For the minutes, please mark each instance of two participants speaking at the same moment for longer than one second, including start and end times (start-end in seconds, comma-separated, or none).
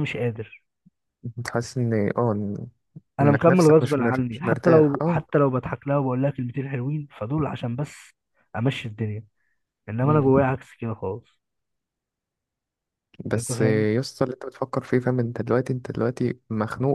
3.2-5.2